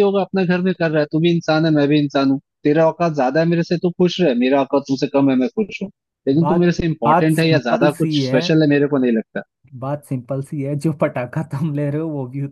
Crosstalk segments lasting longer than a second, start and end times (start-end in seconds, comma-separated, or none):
6.4-8.4